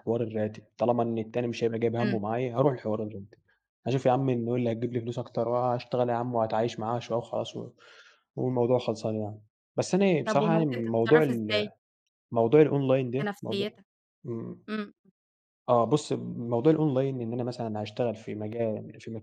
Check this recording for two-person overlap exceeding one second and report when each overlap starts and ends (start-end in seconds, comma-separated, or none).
10.3-11.7